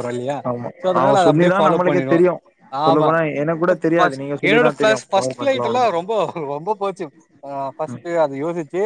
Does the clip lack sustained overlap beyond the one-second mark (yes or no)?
no